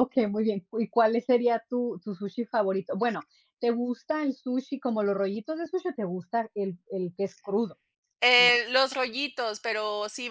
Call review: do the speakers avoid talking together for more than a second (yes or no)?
yes